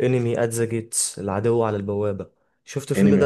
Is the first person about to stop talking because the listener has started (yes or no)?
yes